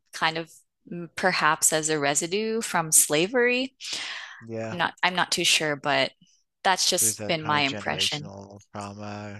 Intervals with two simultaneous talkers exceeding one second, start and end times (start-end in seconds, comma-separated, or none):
7.0-8.3